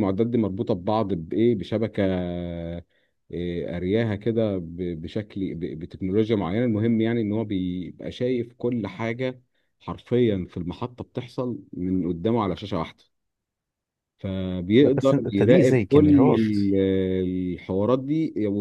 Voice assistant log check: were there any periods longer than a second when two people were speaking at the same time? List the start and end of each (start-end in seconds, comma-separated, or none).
14.8-16.6